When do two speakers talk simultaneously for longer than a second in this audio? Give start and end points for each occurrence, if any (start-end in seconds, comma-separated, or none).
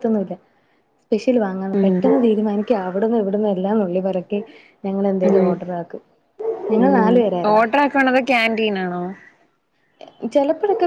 none